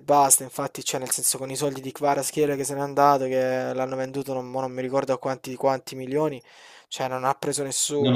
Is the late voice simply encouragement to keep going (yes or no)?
no